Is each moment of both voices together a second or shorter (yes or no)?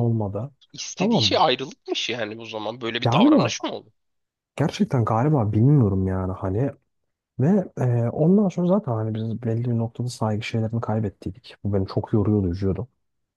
yes